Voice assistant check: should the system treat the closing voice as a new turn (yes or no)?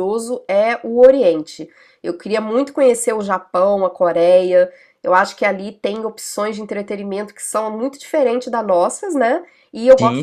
no